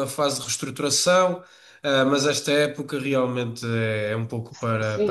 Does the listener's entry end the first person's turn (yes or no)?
yes